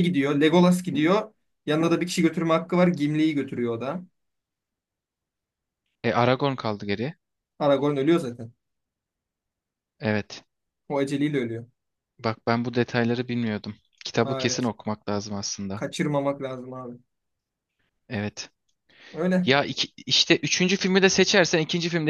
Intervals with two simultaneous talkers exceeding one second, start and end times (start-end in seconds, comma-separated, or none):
none